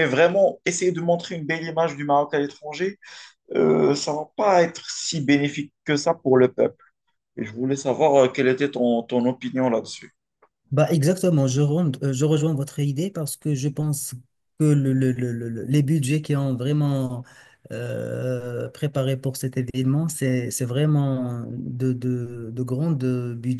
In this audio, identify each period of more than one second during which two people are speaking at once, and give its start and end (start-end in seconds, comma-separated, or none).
none